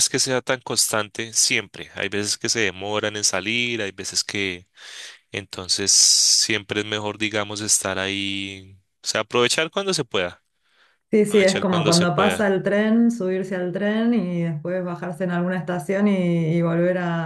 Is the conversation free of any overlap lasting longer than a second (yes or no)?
no